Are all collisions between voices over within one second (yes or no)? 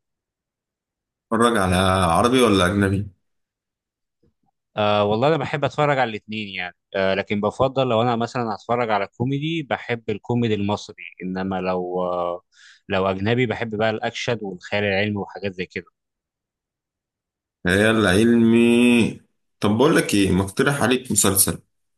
yes